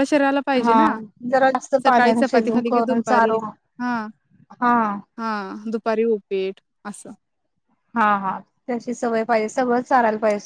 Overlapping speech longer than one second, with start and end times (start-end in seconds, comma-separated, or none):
1.8-3.4